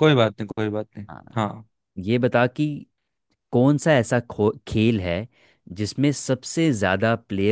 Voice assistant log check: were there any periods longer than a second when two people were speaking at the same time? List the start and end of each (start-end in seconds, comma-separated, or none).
none